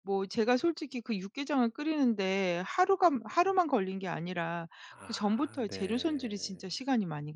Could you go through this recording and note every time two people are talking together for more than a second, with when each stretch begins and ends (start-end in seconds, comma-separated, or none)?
5.0-6.6